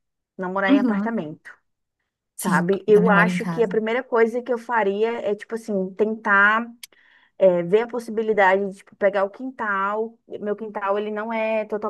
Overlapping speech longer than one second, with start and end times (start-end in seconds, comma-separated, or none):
2.4-3.8